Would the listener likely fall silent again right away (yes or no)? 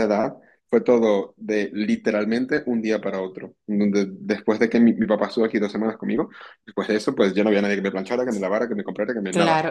no